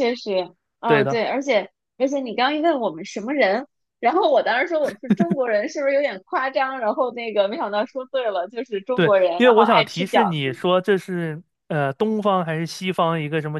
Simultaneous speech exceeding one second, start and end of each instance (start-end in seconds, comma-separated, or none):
8.9-10.6